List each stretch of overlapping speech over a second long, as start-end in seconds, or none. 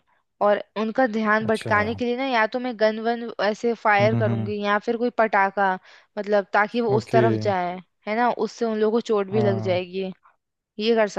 none